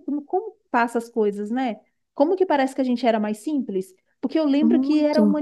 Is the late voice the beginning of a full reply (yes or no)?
no